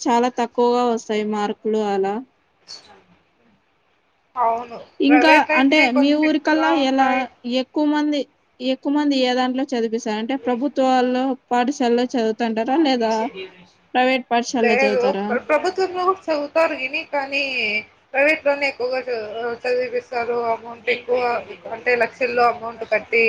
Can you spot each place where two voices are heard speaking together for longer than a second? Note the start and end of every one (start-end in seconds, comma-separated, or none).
5.1-7.1